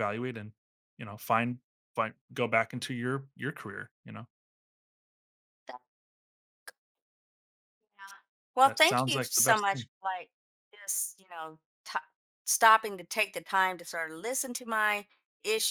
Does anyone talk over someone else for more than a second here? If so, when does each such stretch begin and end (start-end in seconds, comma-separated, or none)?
8.6-9.9